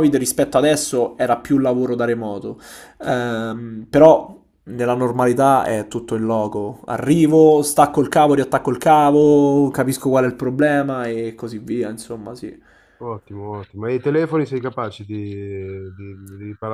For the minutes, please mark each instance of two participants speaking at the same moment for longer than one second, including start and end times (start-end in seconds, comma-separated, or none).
none